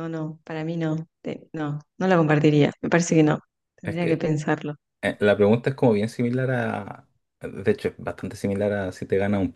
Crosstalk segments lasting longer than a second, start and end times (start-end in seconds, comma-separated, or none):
none